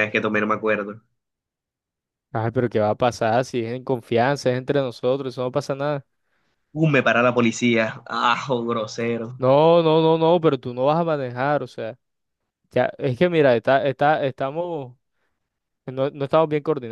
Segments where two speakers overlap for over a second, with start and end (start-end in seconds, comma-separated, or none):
none